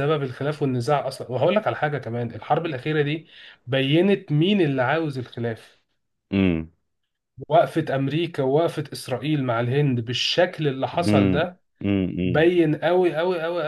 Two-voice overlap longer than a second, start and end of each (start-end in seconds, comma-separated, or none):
none